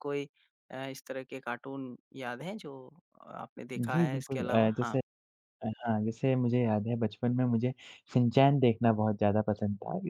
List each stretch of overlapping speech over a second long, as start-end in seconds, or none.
3.8-5.0